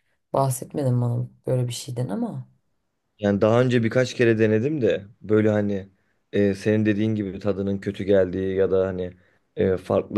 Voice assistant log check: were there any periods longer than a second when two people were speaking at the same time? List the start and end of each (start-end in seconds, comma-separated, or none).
none